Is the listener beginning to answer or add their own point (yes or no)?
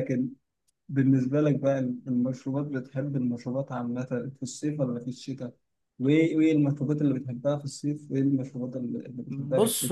yes